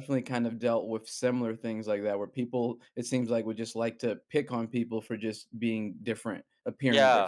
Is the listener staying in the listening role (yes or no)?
no